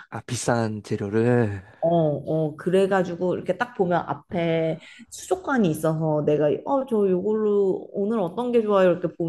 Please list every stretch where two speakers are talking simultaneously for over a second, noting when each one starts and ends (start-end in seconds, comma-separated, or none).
none